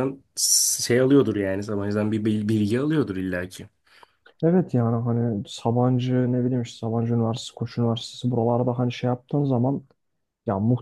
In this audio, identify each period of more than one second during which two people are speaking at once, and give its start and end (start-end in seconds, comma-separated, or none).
none